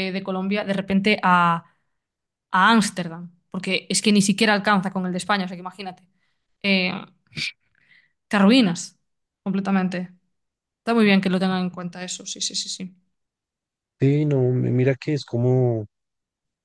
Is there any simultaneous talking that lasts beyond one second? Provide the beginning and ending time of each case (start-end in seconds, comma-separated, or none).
none